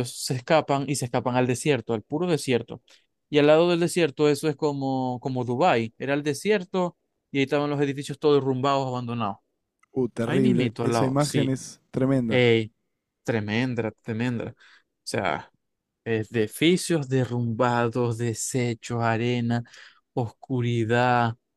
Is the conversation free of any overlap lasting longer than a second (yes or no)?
no